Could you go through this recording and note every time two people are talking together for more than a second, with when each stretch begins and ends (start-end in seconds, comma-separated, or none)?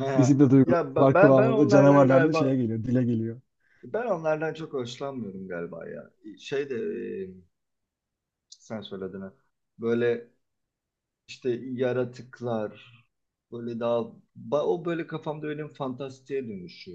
0.6-2.6